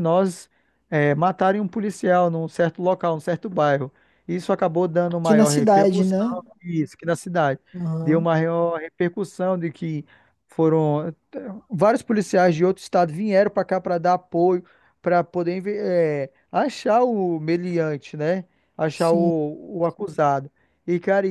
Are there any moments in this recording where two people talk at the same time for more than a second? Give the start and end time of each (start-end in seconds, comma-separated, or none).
5.1-6.4